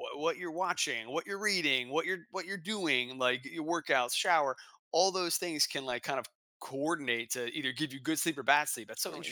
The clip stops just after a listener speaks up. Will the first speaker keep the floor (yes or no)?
no